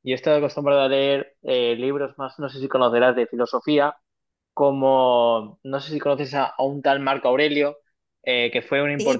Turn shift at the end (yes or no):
no